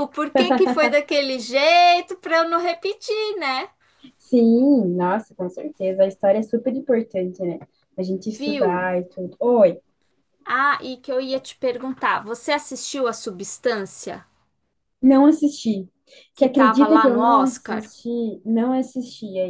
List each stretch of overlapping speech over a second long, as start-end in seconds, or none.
16.4-17.9